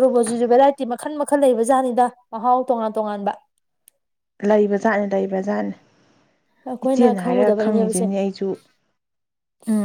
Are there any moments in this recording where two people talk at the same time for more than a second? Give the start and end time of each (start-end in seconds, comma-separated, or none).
6.8-8.1